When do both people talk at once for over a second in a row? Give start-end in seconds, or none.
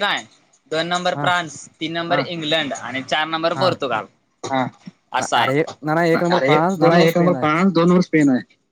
5.4-7.5